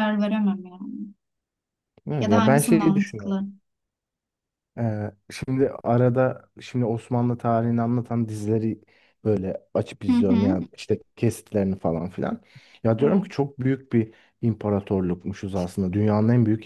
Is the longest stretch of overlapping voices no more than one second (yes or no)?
no